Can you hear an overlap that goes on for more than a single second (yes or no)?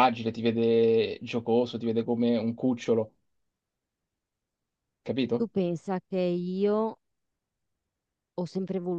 no